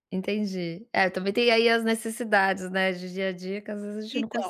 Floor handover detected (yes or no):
yes